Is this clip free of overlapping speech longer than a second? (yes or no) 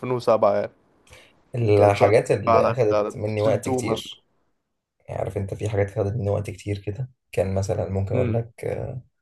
no